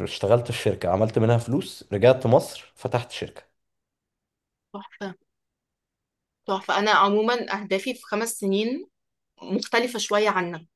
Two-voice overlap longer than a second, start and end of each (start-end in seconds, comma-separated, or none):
none